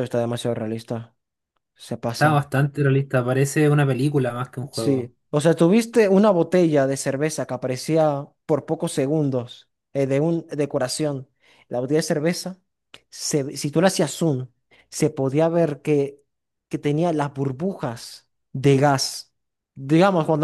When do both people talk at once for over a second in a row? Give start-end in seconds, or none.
none